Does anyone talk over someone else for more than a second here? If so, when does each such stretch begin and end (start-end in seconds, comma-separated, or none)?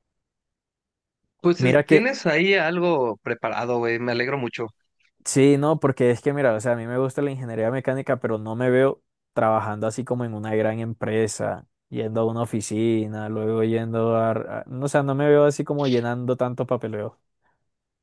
none